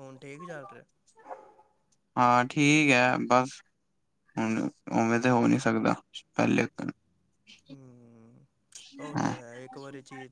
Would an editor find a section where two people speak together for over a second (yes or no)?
no